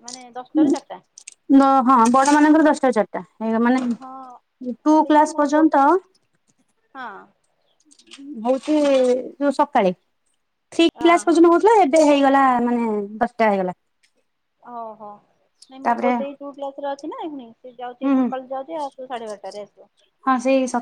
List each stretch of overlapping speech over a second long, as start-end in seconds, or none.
4.0-5.6